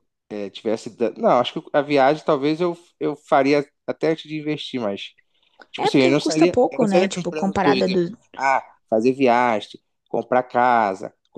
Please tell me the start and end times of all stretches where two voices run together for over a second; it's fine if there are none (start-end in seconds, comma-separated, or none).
5.8-8.1